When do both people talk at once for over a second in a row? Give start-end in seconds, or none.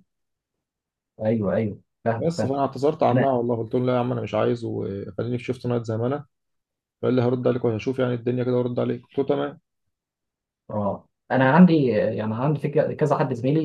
none